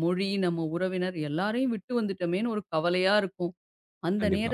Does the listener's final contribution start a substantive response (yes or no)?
no